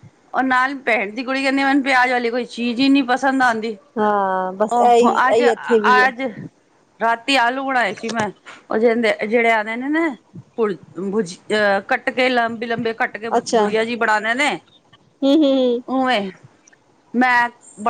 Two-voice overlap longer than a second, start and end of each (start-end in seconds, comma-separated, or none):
4.8-6.1